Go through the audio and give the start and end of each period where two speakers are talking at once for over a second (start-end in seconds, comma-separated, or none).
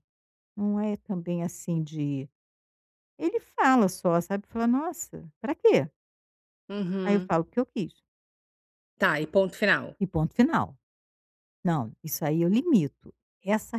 none